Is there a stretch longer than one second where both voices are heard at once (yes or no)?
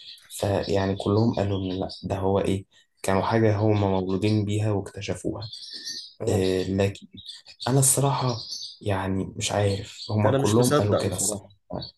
yes